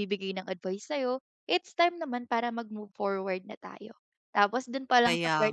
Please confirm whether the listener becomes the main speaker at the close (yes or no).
no